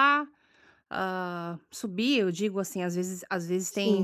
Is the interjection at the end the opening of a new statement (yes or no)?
no